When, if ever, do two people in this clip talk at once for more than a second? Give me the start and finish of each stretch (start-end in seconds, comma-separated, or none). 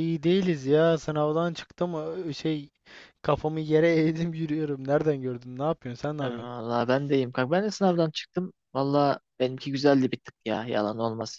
none